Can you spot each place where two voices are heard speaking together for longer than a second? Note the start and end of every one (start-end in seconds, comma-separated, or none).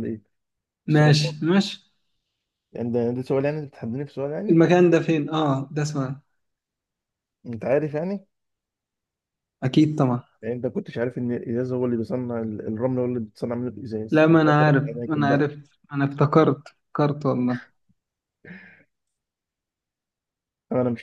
14.1-15.5